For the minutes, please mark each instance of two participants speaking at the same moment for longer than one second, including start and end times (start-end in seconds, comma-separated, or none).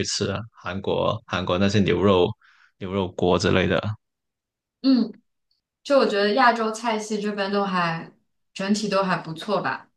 none